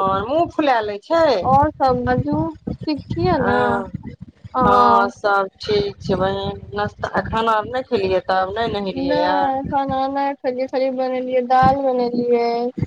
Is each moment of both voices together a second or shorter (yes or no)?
yes